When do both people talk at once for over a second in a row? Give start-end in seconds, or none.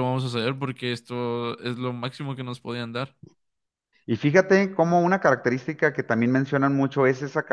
none